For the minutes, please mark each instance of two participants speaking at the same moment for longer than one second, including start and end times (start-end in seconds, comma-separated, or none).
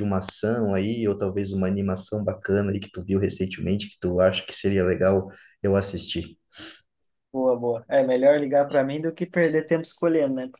none